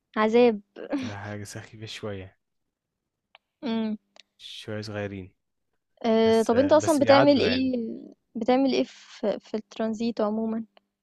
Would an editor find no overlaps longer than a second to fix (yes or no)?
no